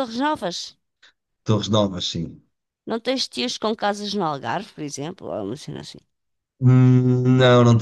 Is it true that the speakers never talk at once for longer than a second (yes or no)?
yes